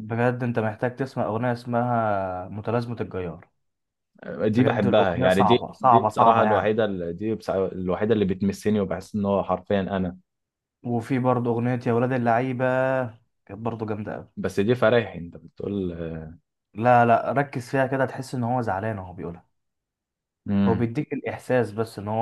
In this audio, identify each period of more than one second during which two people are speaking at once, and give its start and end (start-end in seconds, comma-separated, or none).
4.5-6.7